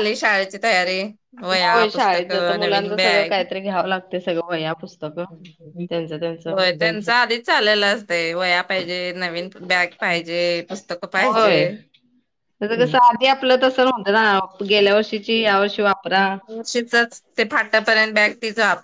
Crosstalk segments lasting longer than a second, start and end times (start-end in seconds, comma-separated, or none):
1.6-3.4